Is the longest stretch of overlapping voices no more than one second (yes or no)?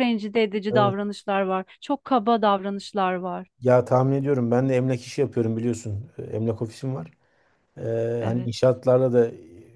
yes